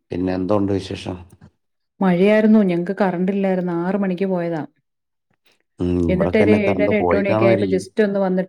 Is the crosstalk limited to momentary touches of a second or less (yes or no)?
no